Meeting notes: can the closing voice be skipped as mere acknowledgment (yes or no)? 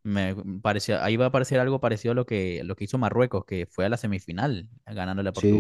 no